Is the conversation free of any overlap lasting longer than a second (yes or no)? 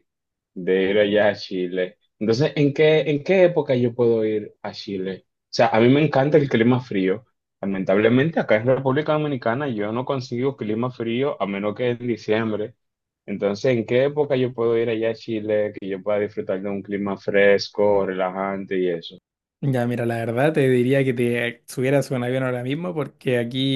yes